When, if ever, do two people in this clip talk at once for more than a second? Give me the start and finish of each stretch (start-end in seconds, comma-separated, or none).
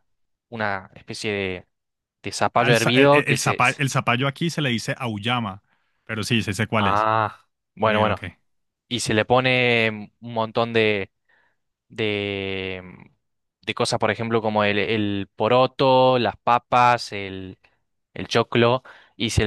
2.5-3.8